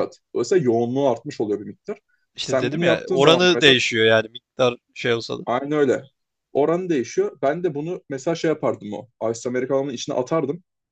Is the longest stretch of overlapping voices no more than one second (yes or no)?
no